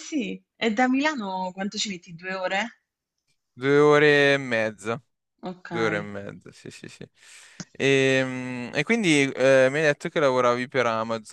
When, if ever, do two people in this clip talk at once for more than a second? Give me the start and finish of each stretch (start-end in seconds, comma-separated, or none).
none